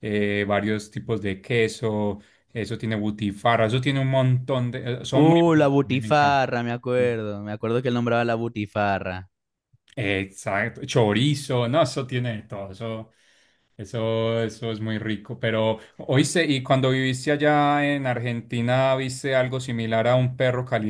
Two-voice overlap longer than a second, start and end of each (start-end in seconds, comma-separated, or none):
5.1-6.4